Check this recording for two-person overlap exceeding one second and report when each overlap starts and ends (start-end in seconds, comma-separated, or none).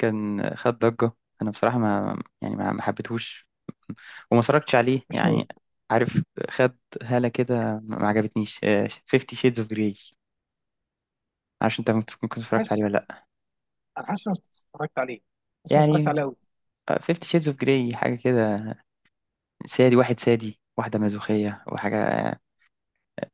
none